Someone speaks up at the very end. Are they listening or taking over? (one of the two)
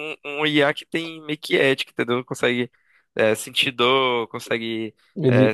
listening